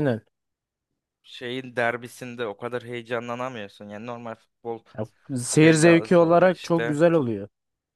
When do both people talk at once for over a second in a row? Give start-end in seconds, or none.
5.5-7.0